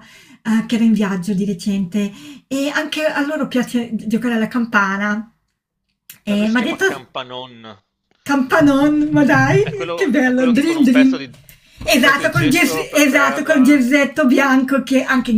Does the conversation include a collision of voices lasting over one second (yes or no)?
yes